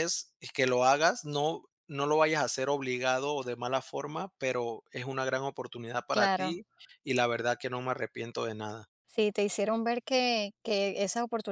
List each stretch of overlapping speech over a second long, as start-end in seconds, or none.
none